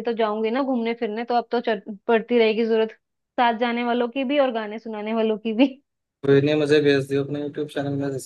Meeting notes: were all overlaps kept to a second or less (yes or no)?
yes